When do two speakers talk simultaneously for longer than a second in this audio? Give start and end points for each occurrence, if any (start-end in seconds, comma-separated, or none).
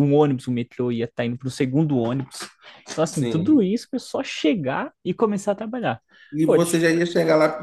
none